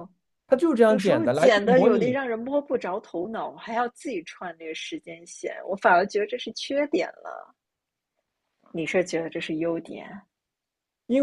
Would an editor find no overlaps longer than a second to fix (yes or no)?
no